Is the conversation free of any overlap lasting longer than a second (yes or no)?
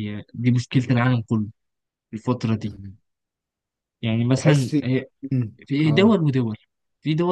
yes